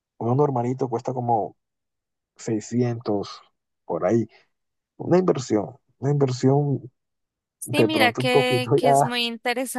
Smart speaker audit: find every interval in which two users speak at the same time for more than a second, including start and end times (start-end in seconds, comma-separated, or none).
7.6-9.2